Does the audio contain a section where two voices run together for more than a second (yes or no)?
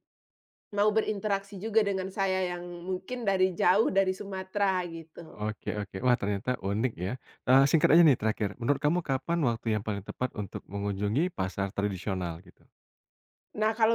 no